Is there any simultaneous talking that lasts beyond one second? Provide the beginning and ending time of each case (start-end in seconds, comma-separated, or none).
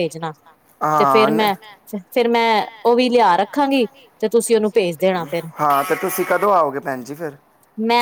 none